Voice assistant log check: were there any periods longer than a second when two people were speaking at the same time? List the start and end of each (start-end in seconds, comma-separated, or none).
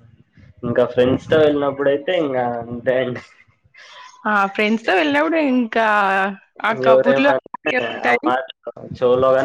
6.9-8.3